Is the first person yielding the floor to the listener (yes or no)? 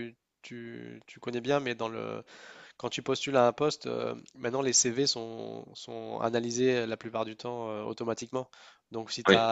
no